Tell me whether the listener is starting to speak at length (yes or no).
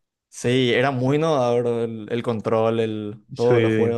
yes